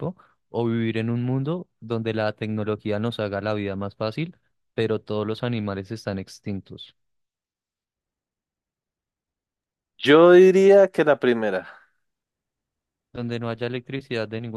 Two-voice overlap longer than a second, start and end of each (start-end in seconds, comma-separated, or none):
none